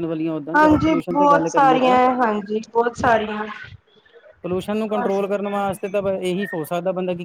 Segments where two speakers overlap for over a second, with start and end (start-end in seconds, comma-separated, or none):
0.6-2.0